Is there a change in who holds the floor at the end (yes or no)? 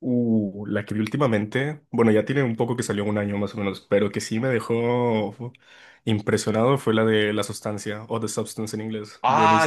yes